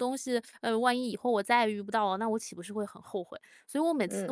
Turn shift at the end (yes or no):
no